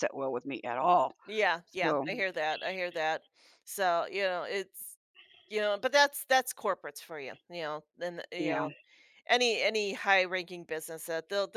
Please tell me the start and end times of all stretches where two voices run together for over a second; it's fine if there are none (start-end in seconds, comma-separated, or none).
none